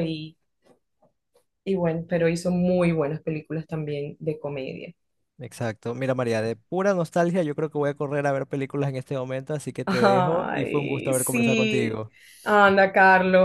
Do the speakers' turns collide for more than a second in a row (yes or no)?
yes